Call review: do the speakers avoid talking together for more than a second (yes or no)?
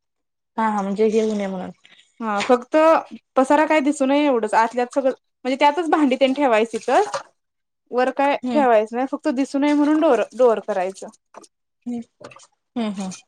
yes